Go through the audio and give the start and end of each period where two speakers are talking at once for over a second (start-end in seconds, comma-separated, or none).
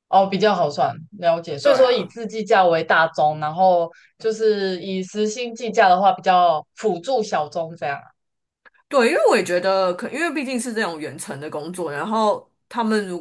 none